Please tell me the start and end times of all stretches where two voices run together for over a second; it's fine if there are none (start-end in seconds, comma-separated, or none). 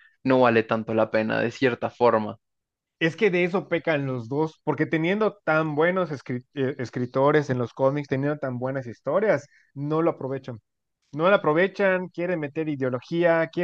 none